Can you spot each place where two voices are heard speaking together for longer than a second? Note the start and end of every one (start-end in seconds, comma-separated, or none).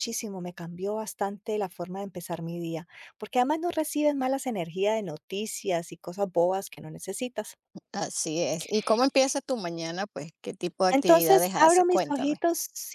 10.9-12.4